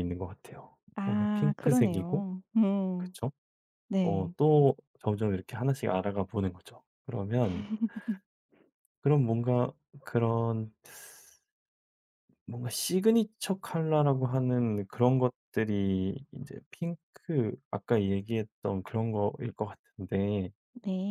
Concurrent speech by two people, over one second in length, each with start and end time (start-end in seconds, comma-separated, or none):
0.9-2.2